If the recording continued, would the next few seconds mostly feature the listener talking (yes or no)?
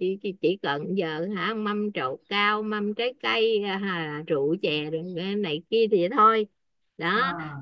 no